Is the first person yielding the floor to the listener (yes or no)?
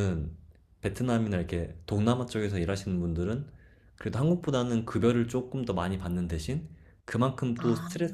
no